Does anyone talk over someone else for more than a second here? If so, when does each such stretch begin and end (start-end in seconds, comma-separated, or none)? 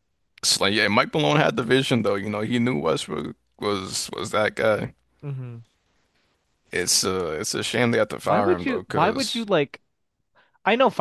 8.2-9.4